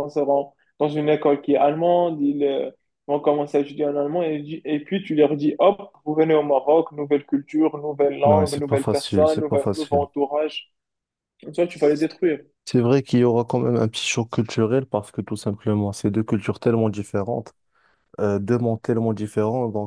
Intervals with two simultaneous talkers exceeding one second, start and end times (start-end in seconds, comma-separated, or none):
8.2-10.0